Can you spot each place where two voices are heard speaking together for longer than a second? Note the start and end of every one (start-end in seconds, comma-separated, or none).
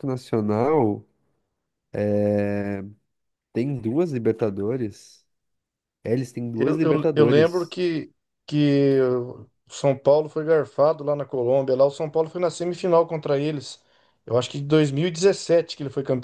6.5-7.8